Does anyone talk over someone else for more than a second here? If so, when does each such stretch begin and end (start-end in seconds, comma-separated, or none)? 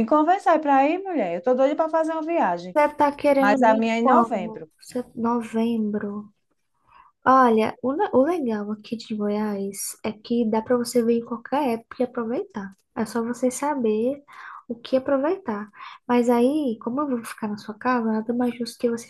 3.4-4.7